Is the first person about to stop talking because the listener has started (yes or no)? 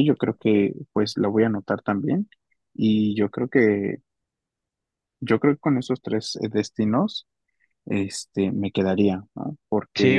yes